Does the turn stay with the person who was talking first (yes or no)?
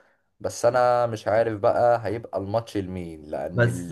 yes